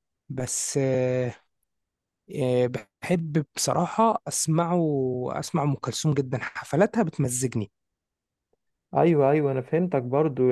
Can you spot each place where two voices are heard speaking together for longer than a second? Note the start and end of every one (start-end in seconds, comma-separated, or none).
none